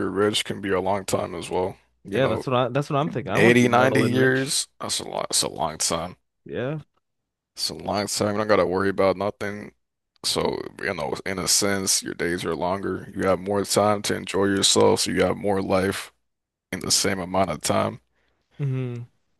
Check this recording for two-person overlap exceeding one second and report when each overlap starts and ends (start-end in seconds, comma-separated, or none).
3.3-4.6